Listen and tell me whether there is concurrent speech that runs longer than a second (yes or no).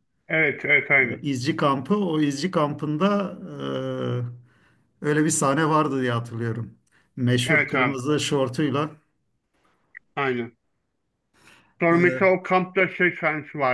no